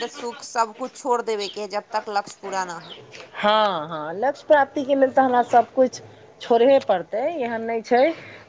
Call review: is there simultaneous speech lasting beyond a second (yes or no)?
no